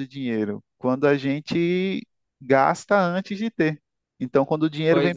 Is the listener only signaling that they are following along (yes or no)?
yes